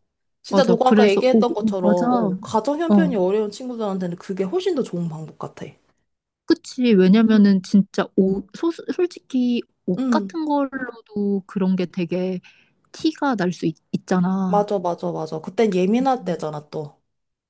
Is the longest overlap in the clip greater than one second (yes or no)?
yes